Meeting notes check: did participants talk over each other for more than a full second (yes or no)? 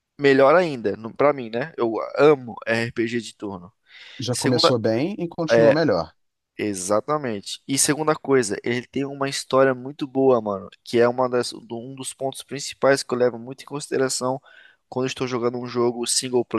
no